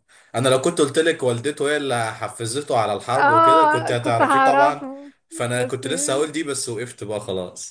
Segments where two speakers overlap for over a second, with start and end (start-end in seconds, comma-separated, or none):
3.2-4.9